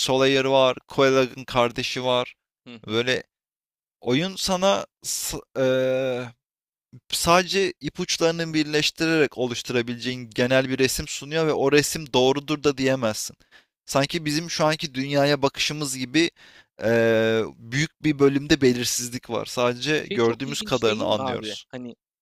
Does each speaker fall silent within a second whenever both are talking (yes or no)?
no